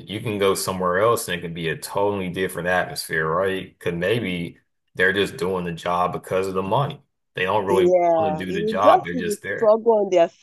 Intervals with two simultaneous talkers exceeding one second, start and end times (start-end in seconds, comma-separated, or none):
7.7-9.7